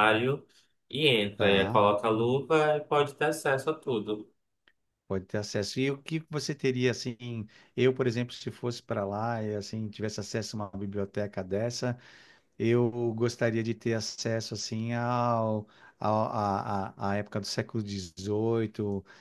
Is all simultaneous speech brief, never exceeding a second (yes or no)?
yes